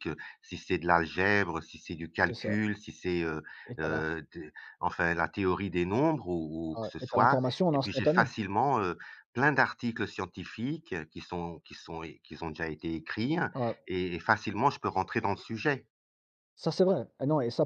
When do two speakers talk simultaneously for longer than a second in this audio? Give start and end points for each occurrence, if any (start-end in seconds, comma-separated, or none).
6.8-8.3